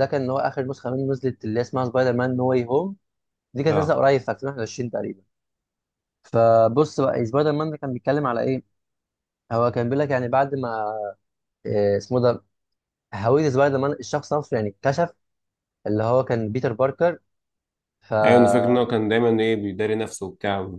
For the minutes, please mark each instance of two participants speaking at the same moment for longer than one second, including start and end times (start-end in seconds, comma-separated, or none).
none